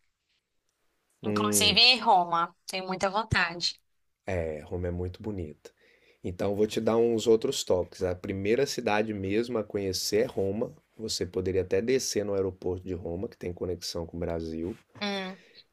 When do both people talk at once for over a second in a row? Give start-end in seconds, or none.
none